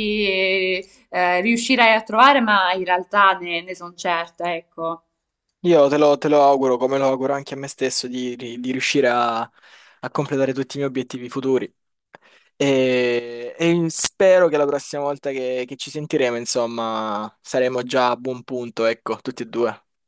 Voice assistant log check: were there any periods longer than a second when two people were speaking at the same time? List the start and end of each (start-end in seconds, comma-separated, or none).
none